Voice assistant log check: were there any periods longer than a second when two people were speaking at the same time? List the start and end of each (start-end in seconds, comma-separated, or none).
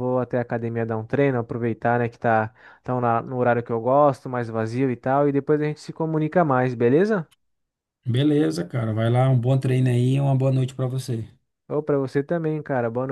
none